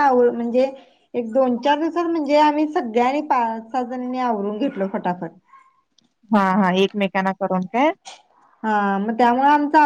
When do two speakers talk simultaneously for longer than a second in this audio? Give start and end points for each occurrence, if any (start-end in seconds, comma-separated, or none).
none